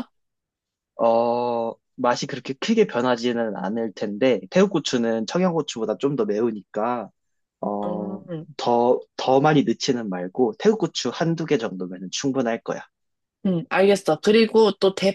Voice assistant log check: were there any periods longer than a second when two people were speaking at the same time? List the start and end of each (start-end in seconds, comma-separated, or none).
none